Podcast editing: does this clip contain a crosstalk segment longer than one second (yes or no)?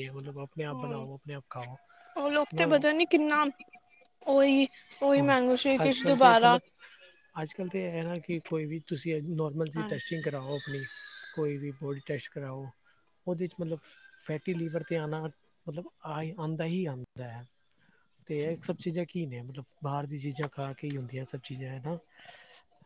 yes